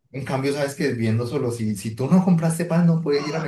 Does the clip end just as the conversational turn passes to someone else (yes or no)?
yes